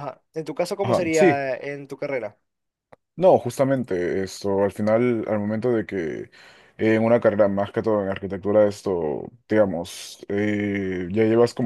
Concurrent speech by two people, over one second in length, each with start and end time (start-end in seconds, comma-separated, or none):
none